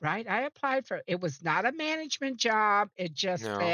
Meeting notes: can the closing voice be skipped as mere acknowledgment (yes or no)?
yes